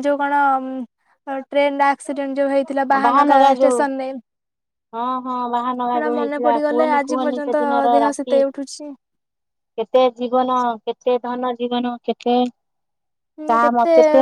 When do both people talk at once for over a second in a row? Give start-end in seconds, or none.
5.9-8.4